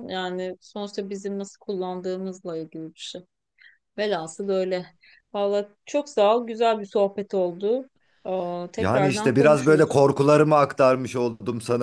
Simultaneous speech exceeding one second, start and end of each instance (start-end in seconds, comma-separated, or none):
8.8-10.0